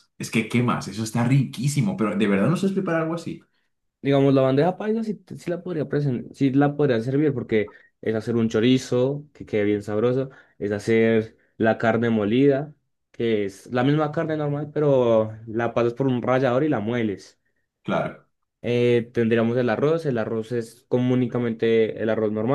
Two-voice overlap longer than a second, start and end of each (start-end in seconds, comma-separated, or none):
none